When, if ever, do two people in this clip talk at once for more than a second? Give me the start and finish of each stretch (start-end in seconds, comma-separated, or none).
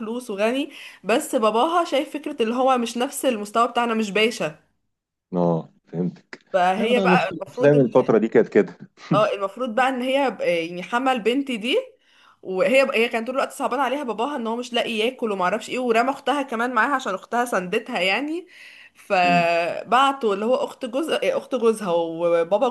6.8-8.1